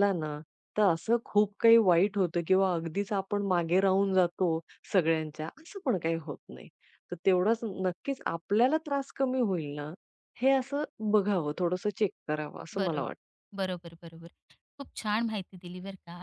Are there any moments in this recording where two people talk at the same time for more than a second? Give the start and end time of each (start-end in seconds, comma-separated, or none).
none